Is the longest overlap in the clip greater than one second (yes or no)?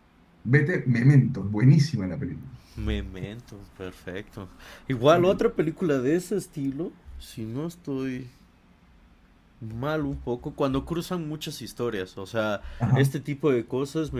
no